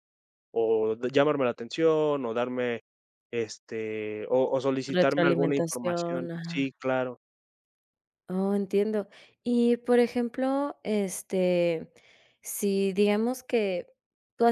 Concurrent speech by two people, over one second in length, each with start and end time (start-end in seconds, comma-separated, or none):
5.0-6.7